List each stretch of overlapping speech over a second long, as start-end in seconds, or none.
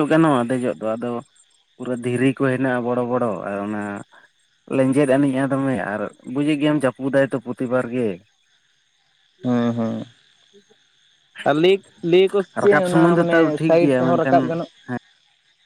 12.5-14.5